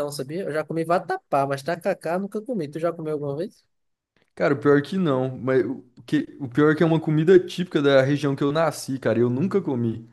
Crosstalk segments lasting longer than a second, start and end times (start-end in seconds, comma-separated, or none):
none